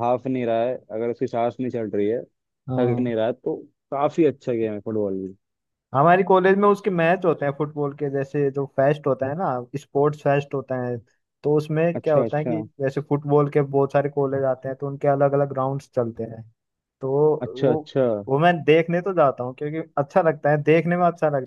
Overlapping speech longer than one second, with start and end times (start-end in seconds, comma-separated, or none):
none